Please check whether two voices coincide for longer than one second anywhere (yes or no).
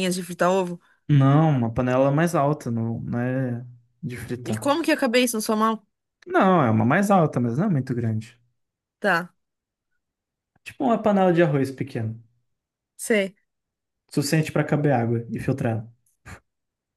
no